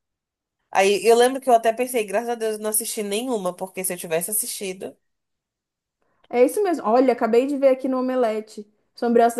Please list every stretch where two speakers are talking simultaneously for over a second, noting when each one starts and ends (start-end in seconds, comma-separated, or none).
none